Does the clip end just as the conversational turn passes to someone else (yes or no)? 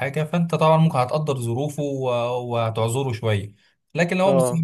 no